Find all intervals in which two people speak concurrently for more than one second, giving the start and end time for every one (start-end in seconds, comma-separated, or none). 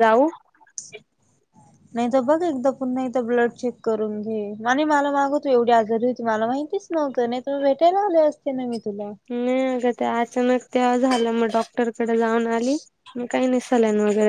none